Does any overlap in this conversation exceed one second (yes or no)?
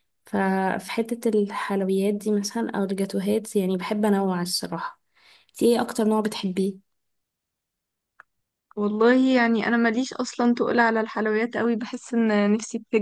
no